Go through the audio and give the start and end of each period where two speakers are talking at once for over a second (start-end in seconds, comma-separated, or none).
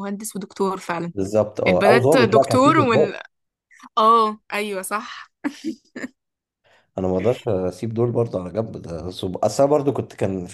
1.7-3.1